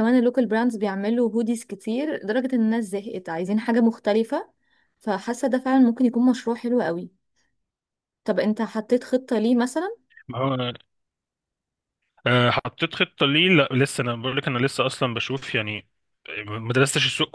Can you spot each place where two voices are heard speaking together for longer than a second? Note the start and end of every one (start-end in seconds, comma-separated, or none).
none